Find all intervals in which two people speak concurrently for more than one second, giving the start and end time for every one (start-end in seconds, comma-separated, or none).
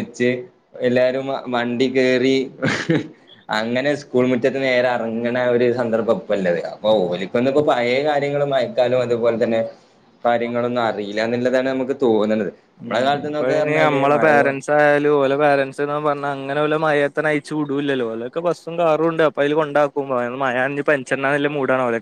12.8-14.5